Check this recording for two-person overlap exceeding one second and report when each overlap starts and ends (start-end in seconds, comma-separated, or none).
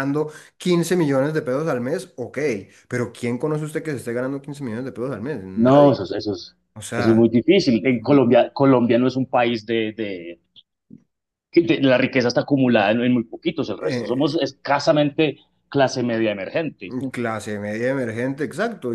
none